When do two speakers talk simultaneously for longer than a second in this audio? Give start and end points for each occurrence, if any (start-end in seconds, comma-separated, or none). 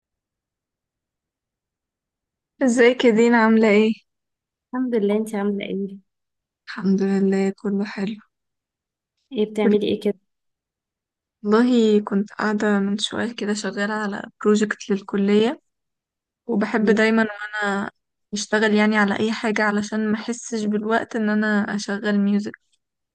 none